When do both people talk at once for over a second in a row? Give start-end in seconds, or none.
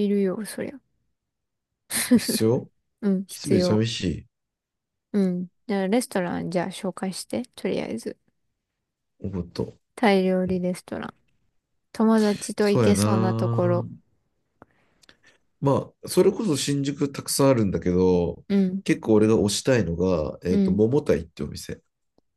12.6-13.8